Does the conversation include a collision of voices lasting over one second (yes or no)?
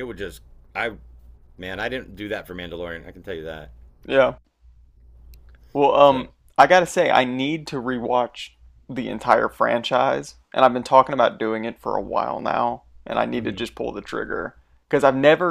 no